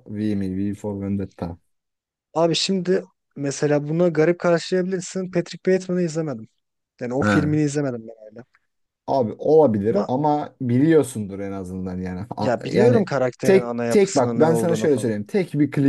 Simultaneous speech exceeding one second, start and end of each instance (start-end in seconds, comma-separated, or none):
12.4-15.1